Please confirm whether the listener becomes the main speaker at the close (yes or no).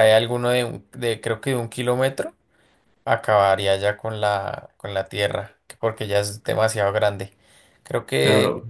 no